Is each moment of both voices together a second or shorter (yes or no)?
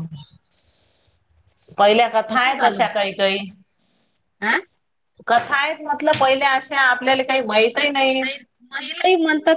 yes